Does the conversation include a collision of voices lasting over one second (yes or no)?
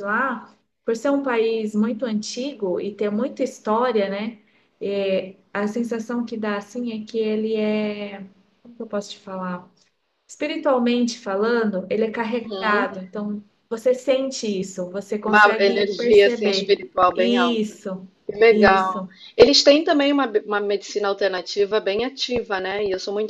yes